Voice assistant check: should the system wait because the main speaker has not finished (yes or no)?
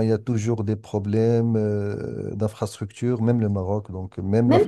no